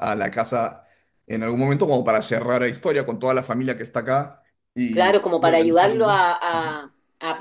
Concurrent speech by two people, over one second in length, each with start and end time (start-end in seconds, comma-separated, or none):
4.9-6.6